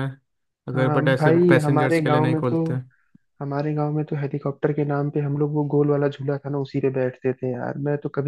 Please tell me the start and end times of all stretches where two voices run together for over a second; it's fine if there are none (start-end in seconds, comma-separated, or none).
0.7-2.6